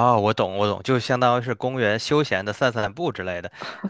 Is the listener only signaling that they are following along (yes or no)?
yes